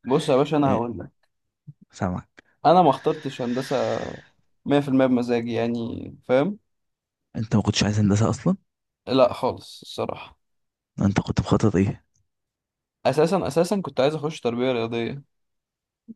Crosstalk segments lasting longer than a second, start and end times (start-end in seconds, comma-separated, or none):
none